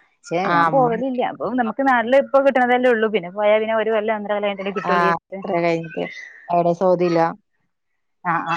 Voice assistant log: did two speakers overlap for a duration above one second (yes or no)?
no